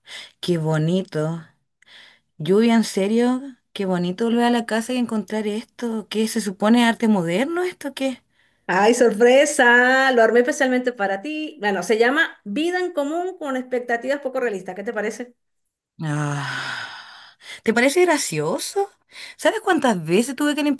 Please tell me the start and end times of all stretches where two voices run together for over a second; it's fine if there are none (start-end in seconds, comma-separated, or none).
none